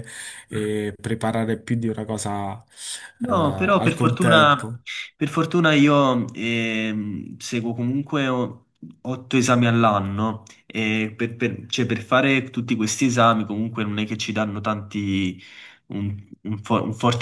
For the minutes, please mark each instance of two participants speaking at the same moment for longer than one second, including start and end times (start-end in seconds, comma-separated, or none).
3.2-4.6